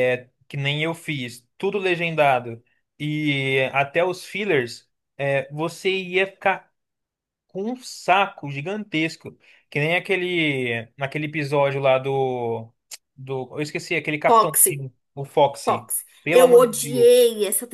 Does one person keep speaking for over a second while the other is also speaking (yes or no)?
yes